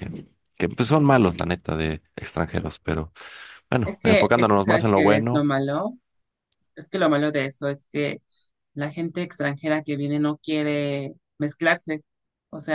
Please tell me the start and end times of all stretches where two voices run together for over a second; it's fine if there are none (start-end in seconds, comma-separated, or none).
3.8-5.4